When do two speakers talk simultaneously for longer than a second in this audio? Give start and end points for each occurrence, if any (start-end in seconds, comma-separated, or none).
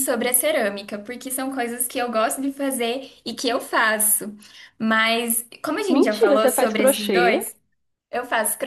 5.9-7.4